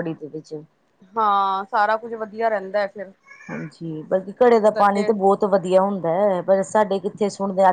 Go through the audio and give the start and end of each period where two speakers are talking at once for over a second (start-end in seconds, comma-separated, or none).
none